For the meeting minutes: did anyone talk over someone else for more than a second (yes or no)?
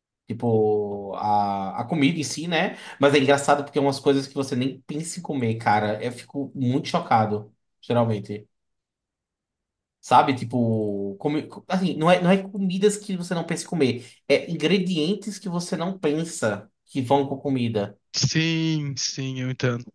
no